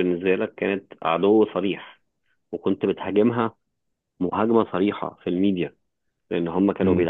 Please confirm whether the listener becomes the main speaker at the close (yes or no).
no